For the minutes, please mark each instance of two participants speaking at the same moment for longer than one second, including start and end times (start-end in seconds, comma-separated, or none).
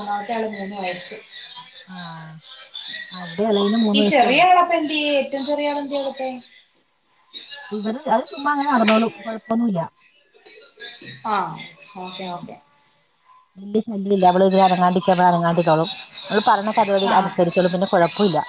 none